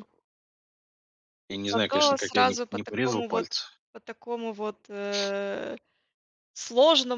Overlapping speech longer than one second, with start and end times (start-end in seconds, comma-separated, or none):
1.6-3.5